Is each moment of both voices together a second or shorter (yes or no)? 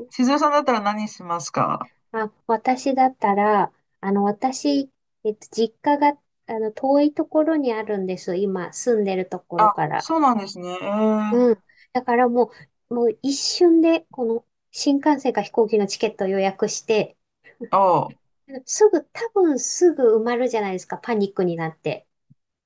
yes